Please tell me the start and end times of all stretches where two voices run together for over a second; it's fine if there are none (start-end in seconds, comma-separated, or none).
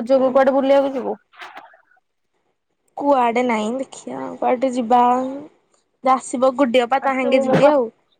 none